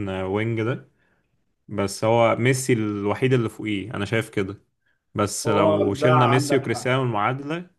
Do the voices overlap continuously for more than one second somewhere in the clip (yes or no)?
yes